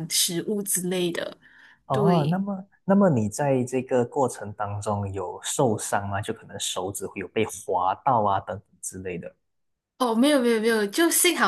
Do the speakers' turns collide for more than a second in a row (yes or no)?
no